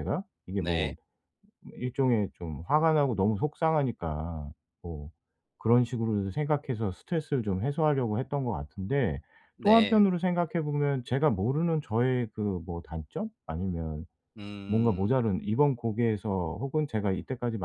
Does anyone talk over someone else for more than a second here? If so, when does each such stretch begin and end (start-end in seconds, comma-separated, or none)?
none